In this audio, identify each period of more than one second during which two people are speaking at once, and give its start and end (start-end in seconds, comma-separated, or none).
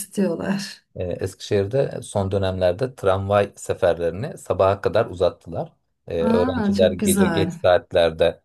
6.2-7.5